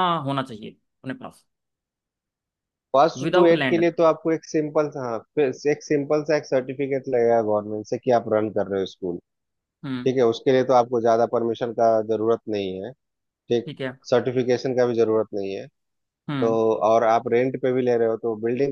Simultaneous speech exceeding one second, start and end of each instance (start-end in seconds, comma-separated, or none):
none